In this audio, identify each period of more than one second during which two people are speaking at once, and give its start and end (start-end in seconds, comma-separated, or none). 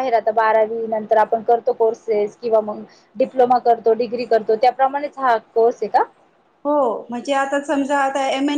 none